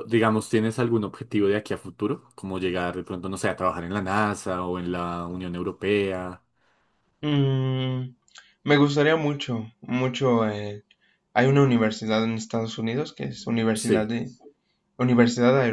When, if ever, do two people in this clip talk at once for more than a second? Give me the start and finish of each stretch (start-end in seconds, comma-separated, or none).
none